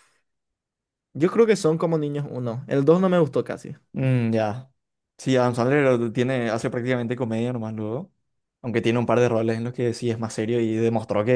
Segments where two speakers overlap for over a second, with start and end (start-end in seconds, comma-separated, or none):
none